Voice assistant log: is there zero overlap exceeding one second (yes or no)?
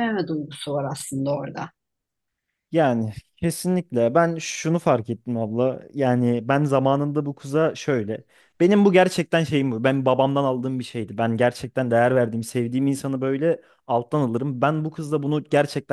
yes